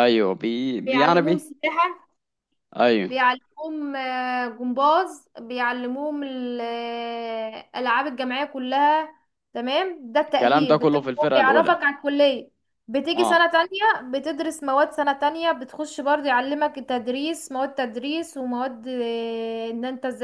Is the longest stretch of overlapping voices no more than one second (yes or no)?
no